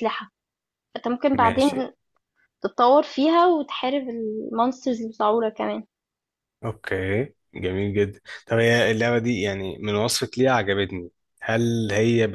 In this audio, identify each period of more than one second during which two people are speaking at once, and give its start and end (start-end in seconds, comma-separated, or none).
none